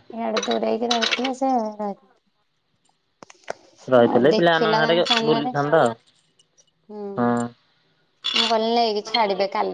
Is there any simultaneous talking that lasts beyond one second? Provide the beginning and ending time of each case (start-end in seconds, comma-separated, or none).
4.1-5.9